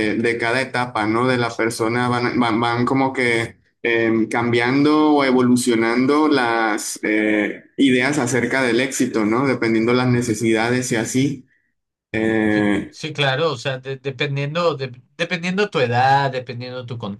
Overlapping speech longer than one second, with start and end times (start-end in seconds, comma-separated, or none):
none